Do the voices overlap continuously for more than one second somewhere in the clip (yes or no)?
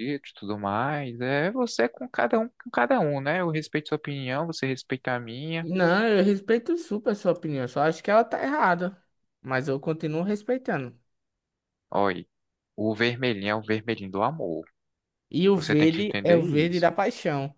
yes